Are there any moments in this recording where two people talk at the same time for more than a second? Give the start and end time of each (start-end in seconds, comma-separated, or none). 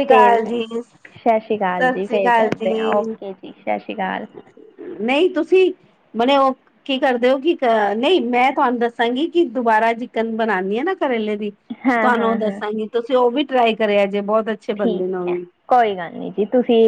1.2-2.5